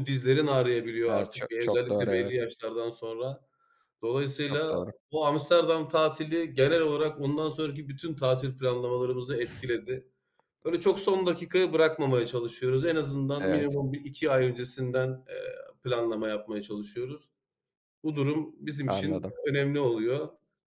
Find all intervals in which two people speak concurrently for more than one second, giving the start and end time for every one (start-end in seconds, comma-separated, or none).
1.1-2.4